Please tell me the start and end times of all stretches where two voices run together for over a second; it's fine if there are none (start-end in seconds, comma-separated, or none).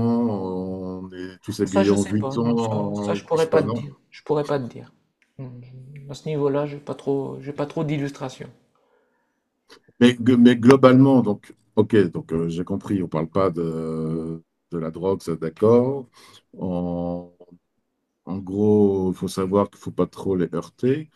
1.6-3.8